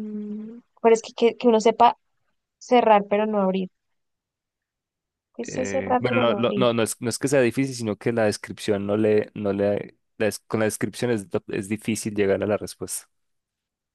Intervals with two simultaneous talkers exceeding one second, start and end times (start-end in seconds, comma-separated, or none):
5.4-6.7